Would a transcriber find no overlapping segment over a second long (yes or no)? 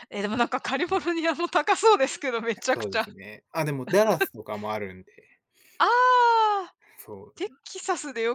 yes